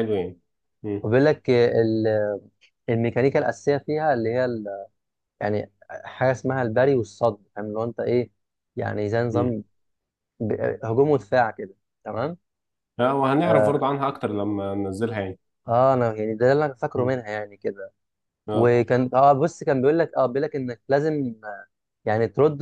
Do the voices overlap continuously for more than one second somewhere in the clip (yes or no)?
no